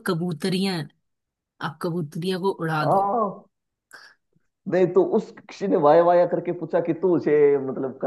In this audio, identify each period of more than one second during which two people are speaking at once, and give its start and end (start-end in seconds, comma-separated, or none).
none